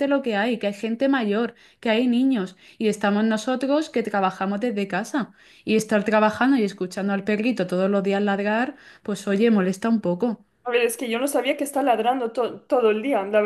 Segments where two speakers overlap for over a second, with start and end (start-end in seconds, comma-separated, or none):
none